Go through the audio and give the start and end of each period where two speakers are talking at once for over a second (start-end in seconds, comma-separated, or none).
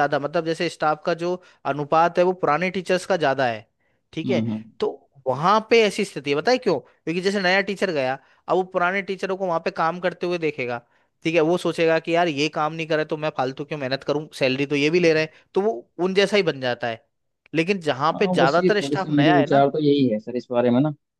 18.1-19.6